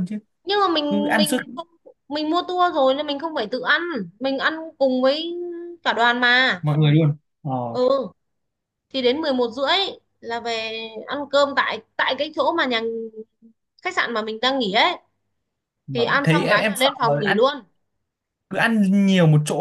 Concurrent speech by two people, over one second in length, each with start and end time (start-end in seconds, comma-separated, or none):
15.9-17.4